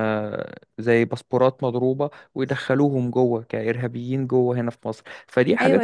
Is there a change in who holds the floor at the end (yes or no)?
yes